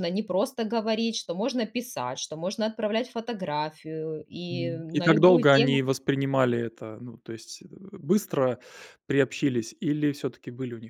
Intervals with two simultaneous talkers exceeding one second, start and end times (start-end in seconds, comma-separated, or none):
4.5-5.8